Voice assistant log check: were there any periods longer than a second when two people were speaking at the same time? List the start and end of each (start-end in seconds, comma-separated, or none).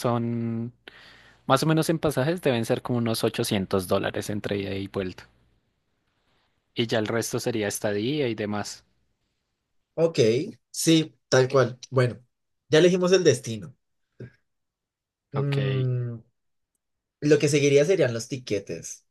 none